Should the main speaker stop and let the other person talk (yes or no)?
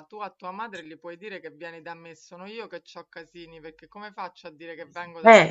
no